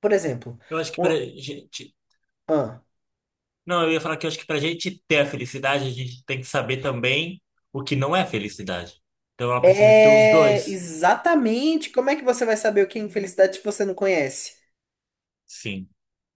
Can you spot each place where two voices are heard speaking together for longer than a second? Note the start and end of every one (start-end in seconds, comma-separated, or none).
9.6-10.8